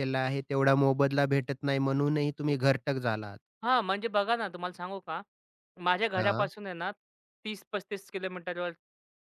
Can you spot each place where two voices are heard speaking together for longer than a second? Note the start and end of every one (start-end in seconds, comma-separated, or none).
none